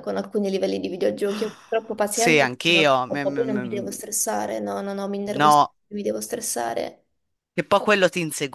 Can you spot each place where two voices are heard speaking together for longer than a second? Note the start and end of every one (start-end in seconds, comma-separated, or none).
2.1-3.9